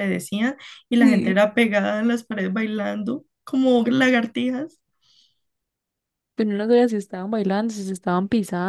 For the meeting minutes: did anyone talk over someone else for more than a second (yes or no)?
no